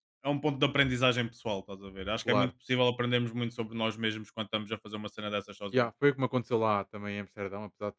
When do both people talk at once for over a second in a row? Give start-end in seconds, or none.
none